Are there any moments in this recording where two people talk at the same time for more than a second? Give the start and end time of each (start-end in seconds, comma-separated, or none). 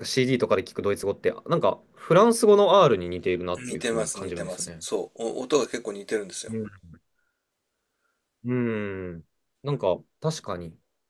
3.6-4.8